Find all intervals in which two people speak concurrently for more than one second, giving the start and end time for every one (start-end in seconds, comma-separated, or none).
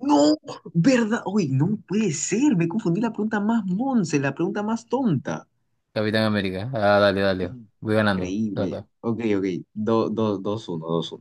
7.4-8.9